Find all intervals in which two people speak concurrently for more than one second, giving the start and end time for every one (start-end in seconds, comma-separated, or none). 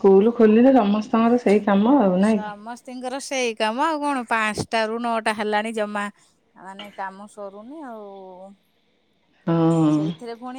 none